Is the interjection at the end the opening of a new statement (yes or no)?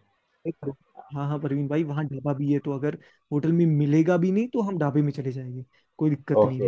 no